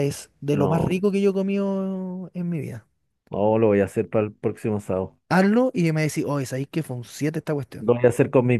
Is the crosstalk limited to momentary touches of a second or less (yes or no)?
yes